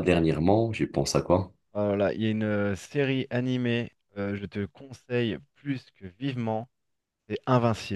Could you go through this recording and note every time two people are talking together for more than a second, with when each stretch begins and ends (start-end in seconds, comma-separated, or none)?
none